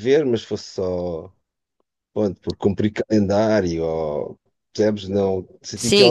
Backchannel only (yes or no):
no